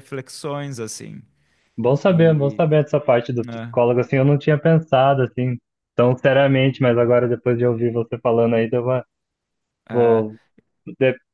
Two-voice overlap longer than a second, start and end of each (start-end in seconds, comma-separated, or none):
none